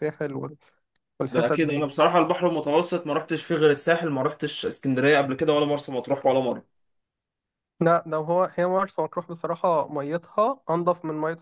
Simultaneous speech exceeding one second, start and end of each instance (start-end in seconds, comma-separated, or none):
none